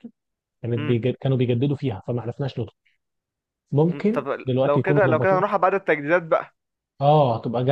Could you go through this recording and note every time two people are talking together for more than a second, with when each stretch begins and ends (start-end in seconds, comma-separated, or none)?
3.9-5.4